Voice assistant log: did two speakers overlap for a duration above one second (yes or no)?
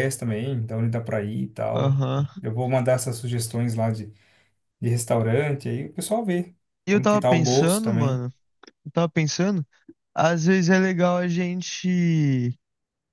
yes